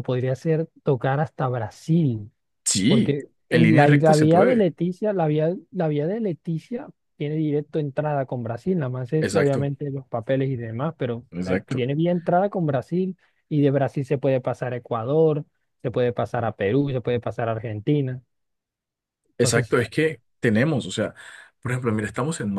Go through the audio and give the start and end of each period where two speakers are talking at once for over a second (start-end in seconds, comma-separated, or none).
2.9-4.7